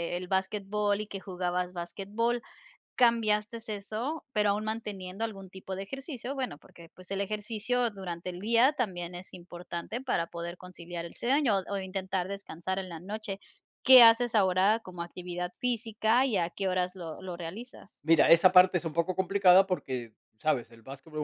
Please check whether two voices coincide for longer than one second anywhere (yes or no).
no